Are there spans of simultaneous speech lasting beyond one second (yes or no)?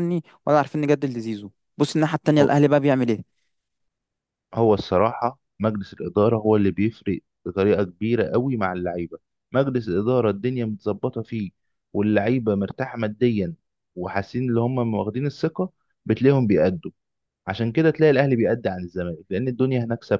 no